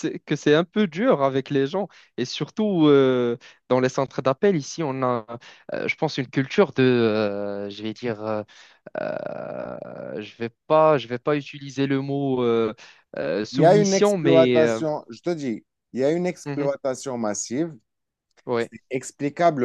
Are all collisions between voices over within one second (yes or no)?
no